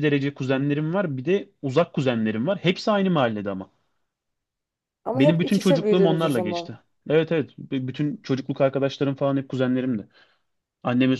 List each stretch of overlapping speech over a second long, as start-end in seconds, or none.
5.1-6.8